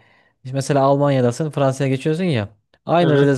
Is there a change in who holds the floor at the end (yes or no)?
no